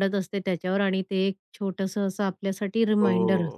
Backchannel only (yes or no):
no